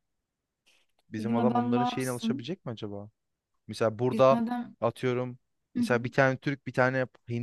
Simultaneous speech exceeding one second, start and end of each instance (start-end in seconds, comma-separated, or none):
1.2-2.5